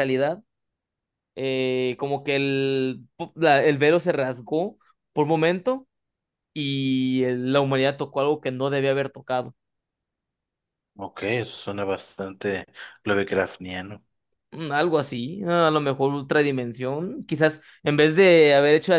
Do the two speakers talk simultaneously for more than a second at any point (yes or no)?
no